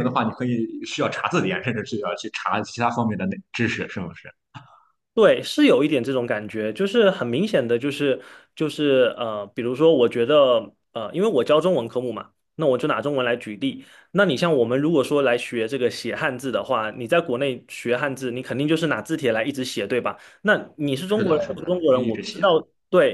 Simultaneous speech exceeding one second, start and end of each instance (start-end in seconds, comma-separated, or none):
21.1-22.5